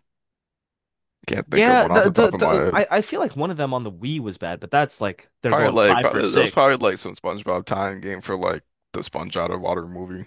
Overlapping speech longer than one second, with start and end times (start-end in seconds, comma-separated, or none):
1.5-2.8, 5.5-6.8